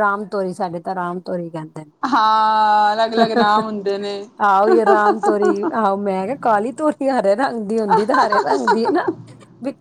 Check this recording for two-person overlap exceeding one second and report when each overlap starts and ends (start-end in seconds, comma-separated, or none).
none